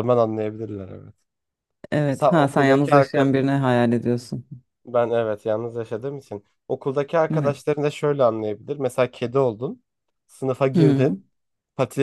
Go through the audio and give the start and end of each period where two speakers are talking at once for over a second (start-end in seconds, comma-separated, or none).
2.1-3.3